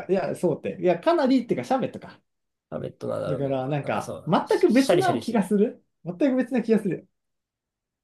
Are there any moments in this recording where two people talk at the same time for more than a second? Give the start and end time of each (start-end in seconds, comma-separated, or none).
3.3-5.5